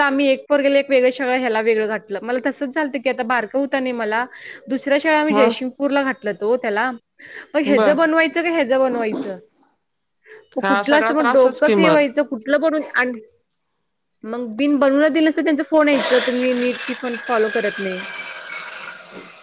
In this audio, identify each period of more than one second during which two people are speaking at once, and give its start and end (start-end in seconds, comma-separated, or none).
10.6-12.0